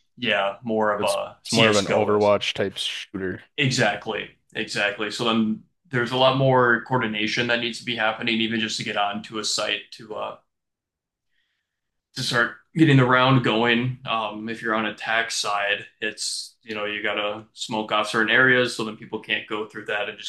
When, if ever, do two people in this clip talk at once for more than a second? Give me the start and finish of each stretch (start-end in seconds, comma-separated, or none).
1.0-2.3